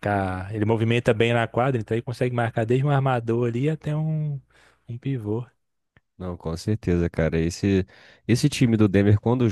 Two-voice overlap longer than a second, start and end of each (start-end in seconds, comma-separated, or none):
none